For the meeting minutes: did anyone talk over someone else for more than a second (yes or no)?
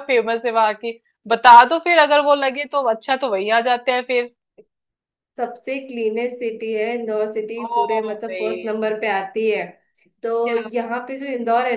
no